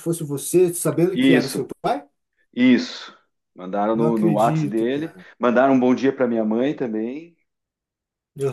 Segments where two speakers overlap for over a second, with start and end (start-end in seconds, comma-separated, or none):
3.9-5.2